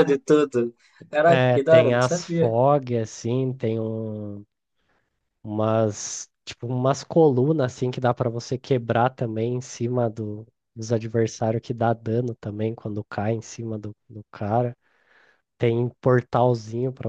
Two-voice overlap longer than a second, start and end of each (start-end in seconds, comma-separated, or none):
1.3-2.5